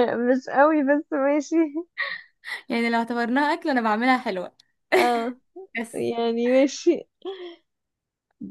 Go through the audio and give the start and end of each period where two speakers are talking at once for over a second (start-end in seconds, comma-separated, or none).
none